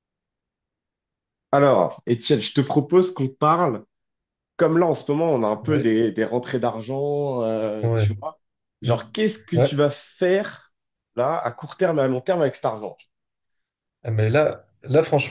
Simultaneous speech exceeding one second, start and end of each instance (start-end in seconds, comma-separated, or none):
none